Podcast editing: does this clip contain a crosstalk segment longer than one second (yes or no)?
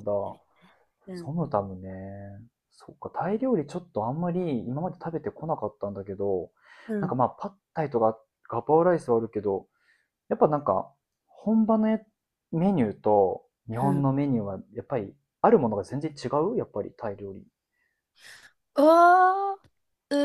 no